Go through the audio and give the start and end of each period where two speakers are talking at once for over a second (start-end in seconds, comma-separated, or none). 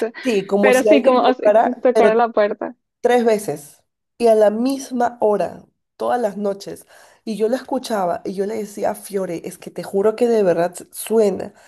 0.6-2.1